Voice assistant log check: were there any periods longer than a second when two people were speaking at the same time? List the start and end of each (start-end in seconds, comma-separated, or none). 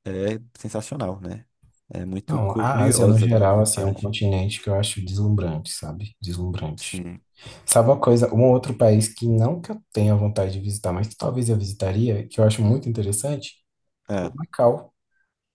2.3-4.1